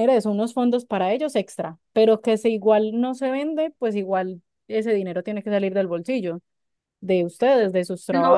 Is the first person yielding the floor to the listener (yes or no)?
yes